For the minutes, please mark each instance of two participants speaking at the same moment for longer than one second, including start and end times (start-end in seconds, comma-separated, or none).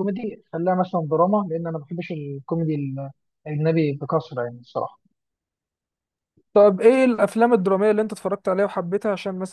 none